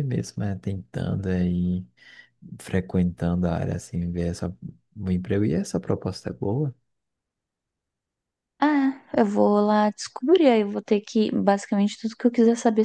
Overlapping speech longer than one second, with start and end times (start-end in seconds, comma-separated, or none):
none